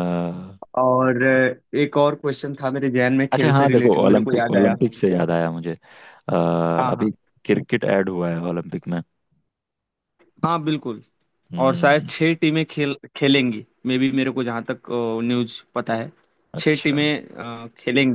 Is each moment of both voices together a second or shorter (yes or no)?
no